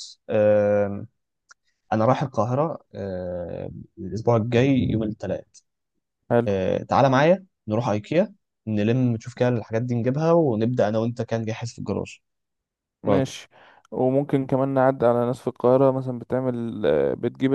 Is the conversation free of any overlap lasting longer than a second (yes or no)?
yes